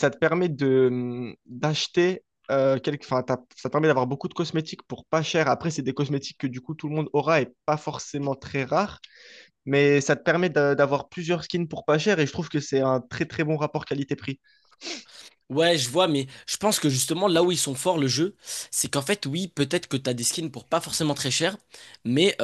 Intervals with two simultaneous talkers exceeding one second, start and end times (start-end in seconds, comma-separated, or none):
none